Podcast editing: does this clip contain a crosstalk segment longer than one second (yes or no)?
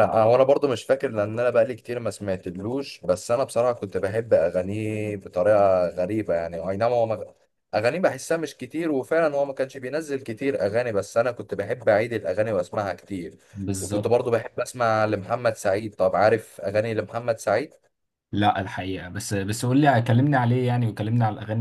no